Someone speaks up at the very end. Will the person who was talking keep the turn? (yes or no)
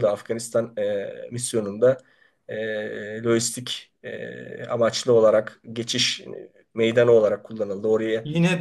no